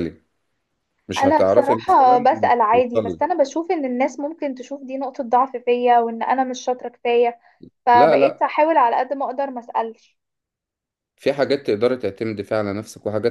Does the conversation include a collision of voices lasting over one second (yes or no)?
yes